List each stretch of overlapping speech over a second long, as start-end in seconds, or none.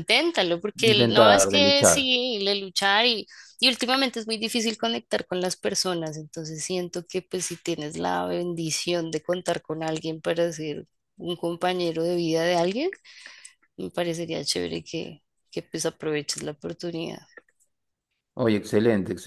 0.8-2.1